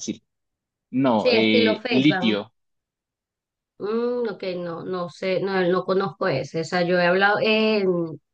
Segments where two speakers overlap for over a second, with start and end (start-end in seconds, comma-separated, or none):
1.1-2.4